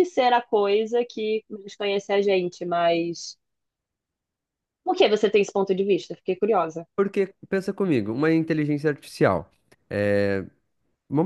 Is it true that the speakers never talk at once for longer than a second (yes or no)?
yes